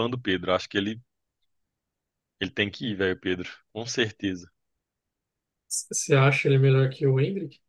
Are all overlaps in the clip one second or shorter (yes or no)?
yes